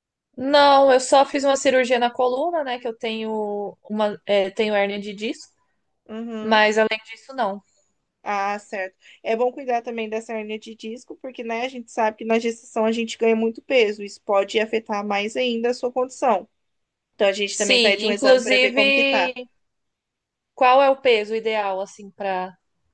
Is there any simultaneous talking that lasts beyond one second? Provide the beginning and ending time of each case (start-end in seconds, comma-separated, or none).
17.5-19.3